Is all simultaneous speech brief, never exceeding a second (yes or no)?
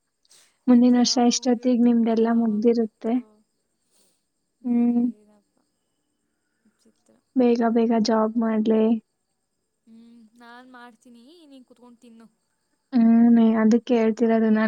no